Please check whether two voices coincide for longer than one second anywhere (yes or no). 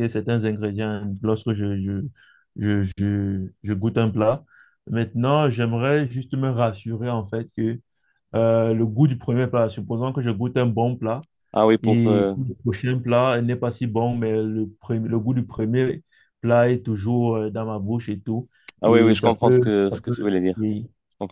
yes